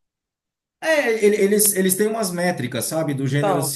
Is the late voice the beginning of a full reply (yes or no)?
no